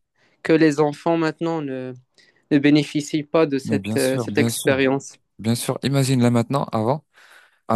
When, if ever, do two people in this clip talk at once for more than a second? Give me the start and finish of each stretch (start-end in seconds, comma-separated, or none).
3.6-4.9